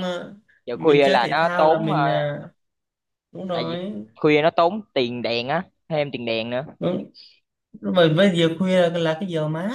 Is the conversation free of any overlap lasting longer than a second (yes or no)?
no